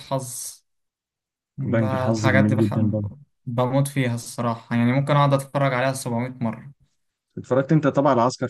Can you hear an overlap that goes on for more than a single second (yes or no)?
yes